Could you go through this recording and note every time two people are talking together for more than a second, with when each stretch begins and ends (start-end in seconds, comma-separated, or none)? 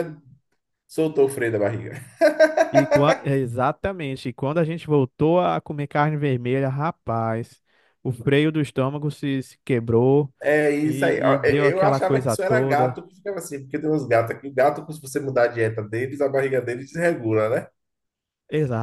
10.8-13.0